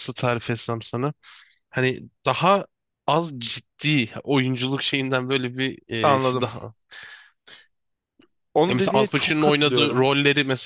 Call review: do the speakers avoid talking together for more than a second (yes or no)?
no